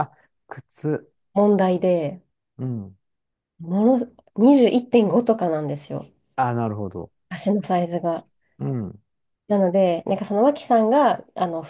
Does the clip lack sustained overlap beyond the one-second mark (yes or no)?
yes